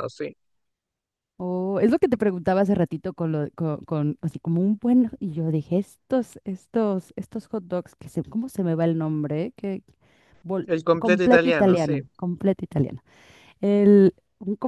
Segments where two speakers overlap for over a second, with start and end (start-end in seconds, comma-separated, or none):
10.7-12.0